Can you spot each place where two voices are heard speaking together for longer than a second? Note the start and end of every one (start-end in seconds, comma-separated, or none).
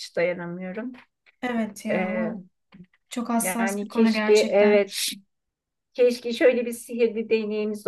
3.4-4.8